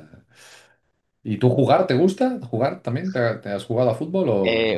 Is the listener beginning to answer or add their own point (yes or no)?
yes